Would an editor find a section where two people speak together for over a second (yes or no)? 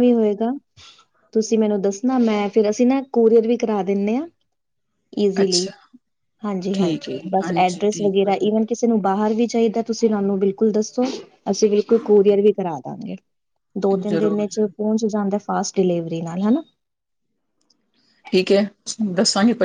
yes